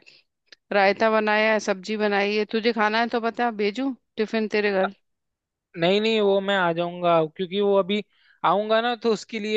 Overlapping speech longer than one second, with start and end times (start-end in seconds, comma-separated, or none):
none